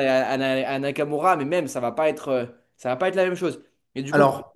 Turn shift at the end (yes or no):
no